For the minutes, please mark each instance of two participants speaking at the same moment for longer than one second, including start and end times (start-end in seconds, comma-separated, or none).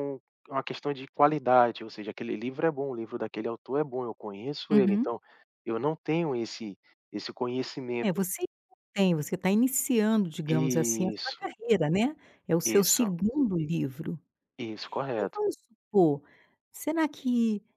none